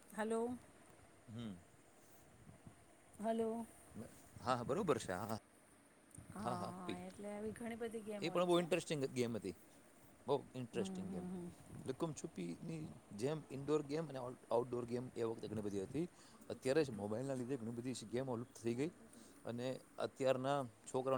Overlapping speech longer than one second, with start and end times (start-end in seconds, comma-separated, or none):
7.1-8.6